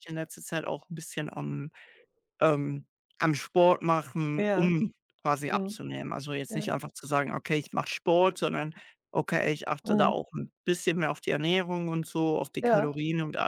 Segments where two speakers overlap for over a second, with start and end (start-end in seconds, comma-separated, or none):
none